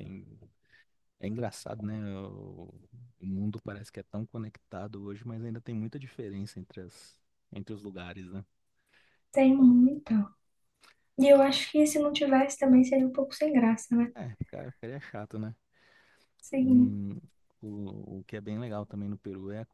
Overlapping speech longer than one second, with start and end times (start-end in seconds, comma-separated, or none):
none